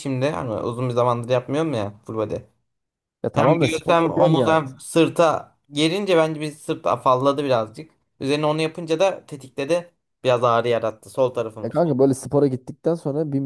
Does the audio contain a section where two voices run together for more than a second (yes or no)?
yes